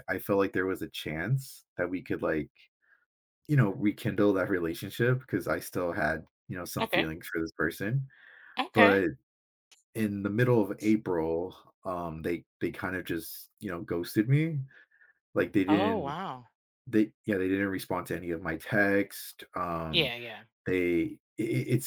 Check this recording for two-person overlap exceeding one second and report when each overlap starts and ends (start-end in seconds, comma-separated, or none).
none